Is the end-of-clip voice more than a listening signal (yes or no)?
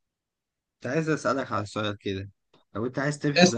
no